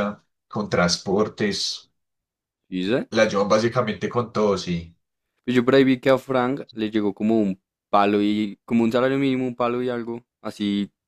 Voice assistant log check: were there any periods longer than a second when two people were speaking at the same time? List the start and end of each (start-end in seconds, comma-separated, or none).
none